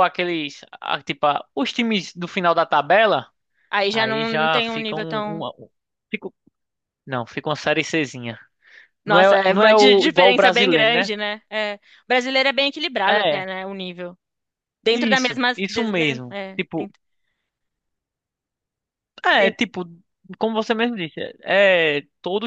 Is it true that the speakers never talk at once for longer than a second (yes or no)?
no